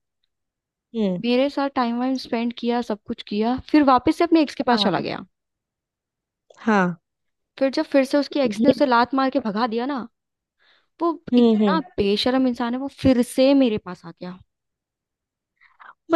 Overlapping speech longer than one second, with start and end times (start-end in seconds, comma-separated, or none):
none